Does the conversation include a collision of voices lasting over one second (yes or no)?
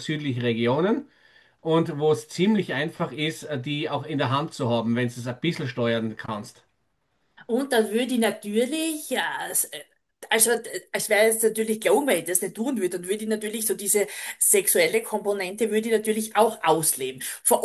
no